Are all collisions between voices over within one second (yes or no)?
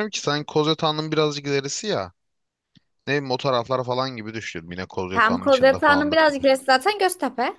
no